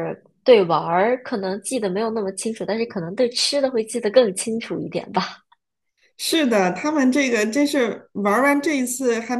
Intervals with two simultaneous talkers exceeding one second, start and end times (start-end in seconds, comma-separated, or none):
none